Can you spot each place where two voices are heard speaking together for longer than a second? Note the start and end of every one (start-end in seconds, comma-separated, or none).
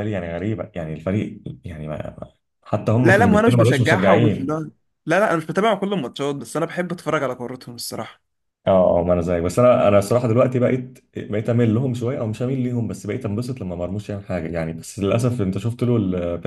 3.0-4.5